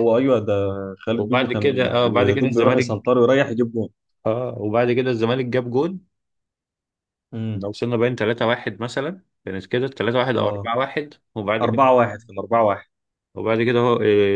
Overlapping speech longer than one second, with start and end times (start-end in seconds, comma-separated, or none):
1.1-2.9